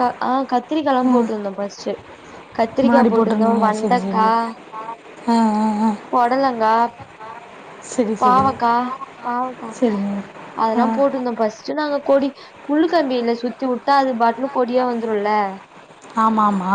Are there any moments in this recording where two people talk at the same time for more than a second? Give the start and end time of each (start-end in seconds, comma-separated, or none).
2.8-4.2